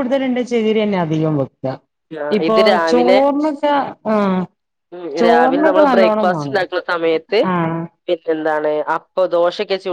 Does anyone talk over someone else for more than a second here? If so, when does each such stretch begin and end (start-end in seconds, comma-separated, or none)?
none